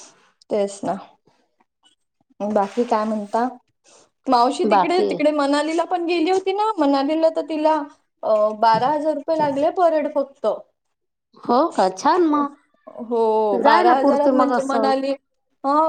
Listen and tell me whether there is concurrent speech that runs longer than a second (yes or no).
yes